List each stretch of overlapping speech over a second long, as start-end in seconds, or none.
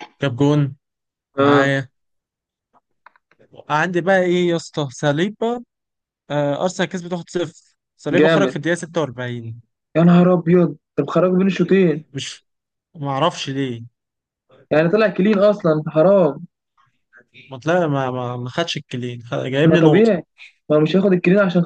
none